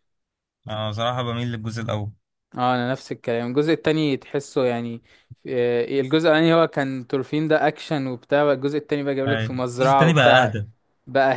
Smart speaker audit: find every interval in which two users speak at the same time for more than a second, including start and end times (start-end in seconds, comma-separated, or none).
9.3-10.6